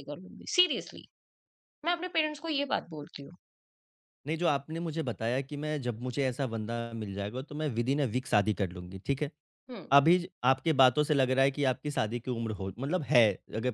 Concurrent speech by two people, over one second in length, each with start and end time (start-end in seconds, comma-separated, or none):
none